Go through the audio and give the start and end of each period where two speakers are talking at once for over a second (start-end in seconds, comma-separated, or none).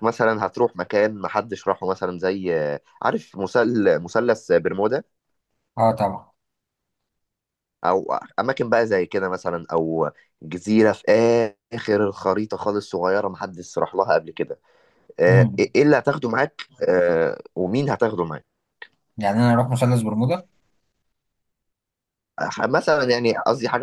none